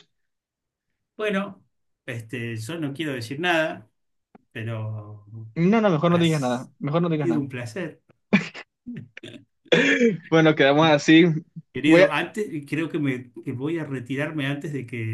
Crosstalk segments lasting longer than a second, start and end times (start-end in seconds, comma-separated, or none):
6.1-7.5